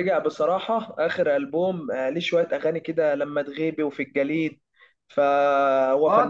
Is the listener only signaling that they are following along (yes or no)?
no